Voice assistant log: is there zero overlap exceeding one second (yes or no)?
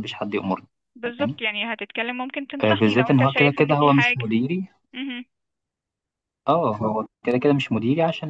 no